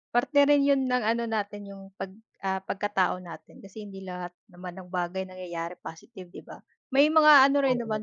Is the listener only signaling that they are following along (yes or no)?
yes